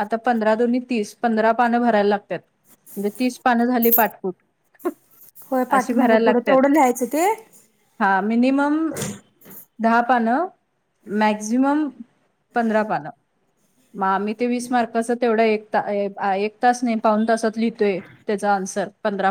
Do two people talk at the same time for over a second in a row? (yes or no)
no